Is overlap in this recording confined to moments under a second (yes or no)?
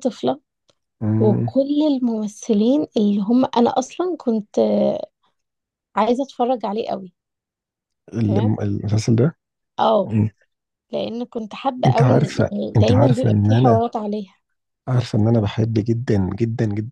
no